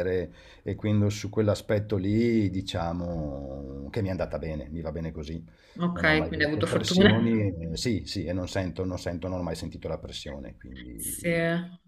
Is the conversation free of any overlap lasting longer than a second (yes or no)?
no